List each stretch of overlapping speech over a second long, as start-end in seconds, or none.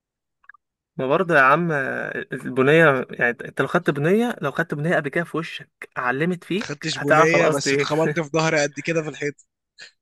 6.6-7.9